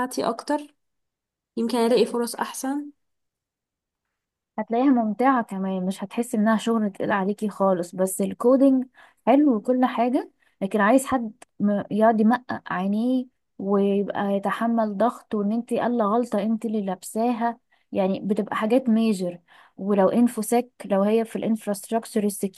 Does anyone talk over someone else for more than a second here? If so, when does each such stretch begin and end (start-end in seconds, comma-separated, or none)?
none